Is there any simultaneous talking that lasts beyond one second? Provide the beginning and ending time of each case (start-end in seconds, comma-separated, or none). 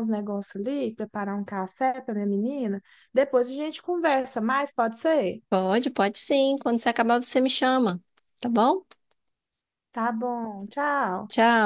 none